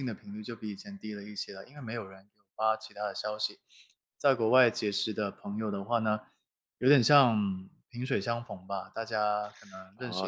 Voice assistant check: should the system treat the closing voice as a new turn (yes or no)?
yes